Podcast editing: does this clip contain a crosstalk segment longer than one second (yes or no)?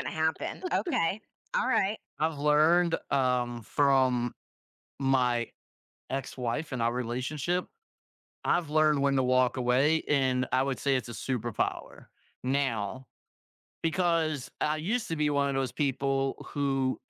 no